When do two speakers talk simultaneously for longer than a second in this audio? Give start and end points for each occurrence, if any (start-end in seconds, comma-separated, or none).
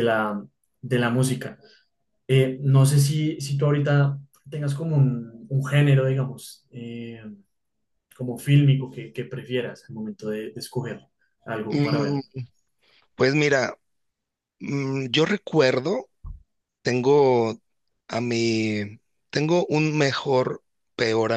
none